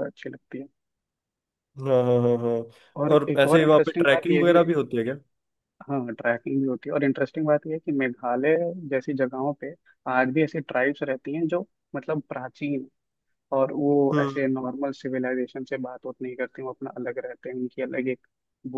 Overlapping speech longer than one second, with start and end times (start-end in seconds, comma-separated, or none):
3.1-4.7